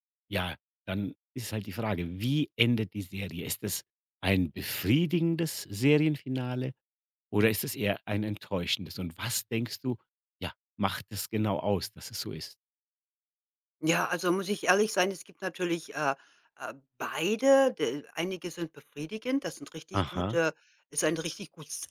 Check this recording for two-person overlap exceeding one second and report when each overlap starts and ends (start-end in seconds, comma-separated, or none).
none